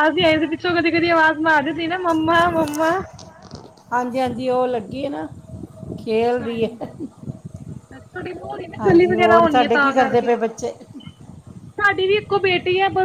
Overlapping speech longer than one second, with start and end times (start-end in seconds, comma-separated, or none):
8.8-10.3